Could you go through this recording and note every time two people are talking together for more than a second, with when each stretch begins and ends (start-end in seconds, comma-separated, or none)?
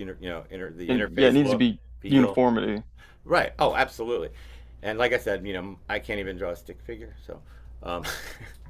0.9-2.4